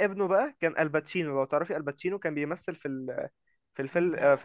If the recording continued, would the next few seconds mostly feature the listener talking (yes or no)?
no